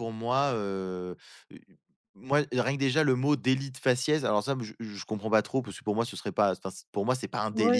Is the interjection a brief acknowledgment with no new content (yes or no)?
no